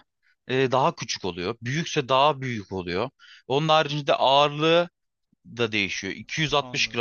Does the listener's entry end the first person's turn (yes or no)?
no